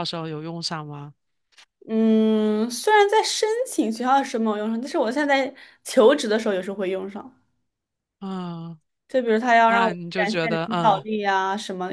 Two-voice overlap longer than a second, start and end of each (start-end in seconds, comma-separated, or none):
9.7-11.1